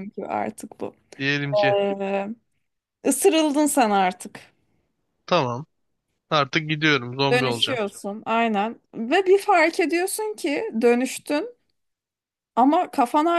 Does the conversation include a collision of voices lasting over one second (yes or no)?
no